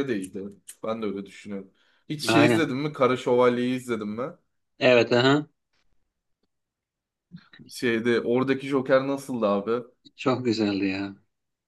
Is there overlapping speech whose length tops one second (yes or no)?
no